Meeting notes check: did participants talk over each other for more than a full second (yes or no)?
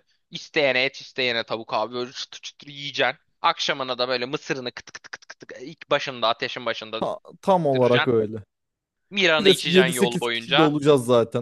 yes